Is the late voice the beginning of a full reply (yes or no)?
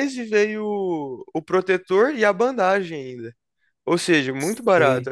yes